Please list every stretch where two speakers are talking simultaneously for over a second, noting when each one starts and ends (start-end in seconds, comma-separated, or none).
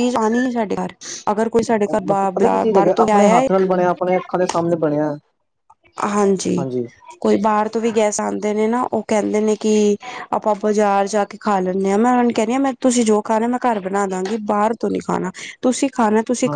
2.1-3.4